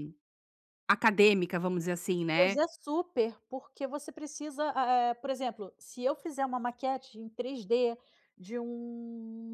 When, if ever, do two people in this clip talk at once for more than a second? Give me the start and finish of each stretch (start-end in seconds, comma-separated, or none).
none